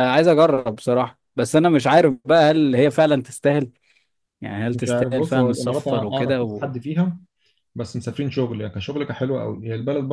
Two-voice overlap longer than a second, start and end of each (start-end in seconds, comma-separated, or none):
4.7-6.7